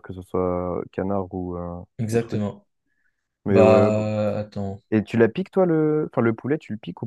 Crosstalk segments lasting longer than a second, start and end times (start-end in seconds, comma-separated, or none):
none